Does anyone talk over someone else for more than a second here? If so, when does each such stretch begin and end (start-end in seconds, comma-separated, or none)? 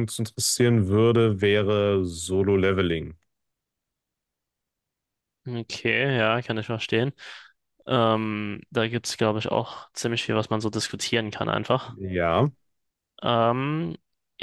none